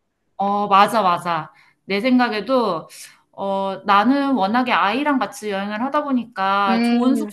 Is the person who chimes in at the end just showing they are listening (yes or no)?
yes